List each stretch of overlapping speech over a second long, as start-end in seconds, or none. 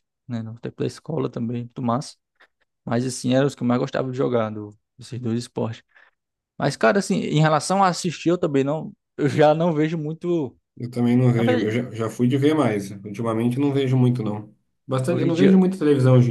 none